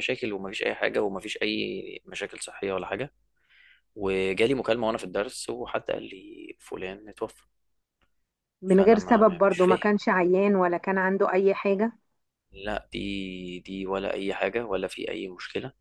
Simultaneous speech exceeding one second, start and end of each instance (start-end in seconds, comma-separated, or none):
8.7-9.9